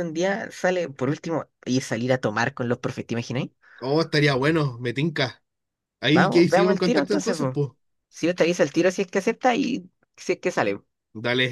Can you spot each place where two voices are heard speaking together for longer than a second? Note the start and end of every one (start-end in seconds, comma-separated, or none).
6.1-7.6